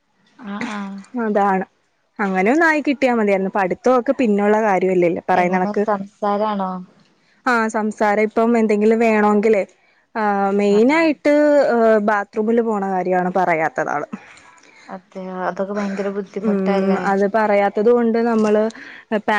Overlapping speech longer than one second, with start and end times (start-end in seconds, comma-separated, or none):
none